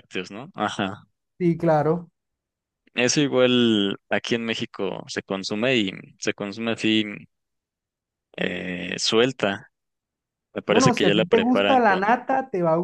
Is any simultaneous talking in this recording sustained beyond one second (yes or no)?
yes